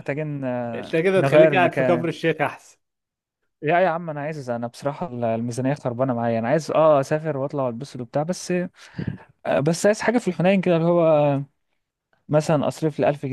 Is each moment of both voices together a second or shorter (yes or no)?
no